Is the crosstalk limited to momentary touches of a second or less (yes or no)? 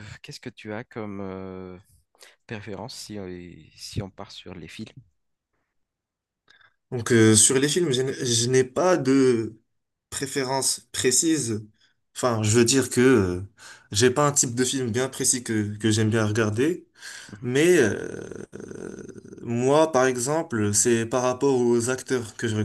yes